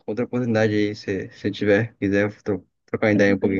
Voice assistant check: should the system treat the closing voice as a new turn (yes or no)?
yes